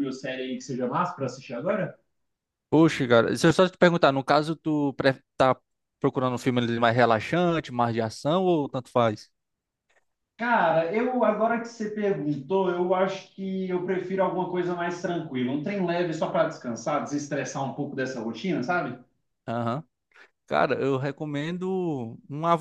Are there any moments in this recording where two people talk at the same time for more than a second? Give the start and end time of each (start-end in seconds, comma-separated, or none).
none